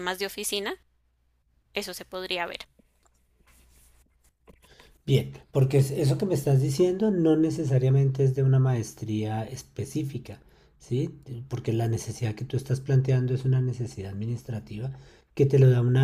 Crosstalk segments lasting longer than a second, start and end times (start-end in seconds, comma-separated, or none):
none